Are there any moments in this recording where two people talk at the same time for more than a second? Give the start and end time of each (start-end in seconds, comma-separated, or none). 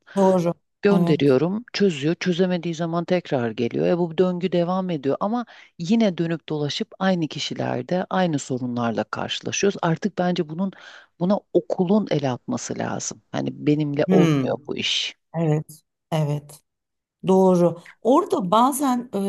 none